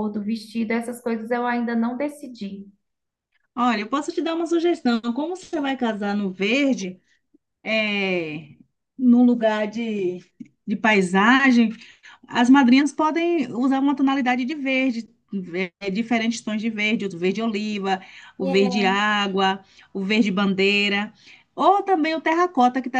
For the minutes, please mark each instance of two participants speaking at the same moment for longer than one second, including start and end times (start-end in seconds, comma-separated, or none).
none